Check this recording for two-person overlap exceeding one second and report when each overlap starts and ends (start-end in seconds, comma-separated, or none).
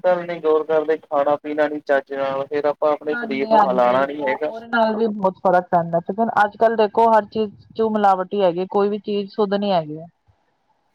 3.1-4.5